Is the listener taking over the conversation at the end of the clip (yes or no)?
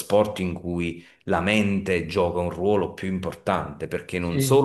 no